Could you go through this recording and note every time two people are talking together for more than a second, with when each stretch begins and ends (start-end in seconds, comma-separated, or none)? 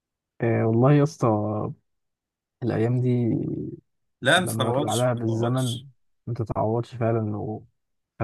4.4-5.8